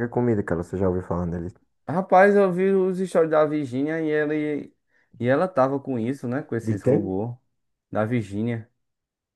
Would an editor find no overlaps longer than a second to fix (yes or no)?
yes